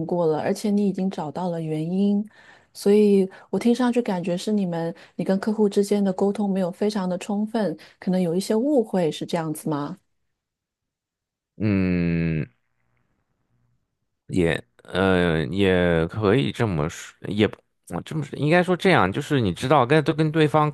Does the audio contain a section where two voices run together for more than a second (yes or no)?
no